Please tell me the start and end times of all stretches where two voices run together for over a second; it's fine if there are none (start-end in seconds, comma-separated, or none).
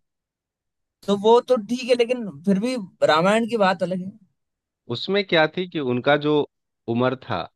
none